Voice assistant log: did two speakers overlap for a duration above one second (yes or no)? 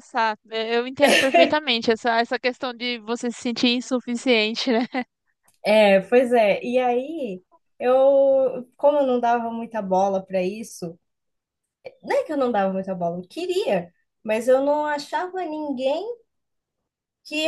no